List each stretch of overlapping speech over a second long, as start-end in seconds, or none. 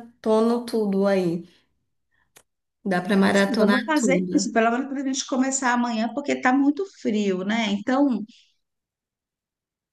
3.2-4.5